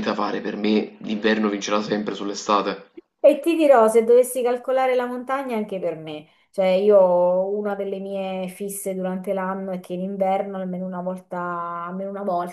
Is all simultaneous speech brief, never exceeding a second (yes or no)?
yes